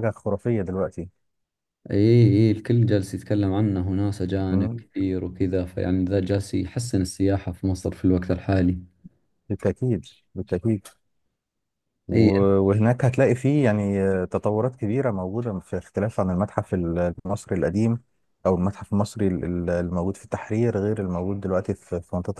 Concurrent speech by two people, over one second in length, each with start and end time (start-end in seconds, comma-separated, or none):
none